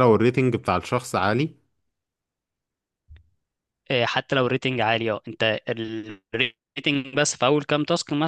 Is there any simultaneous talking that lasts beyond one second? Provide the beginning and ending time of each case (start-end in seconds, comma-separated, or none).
none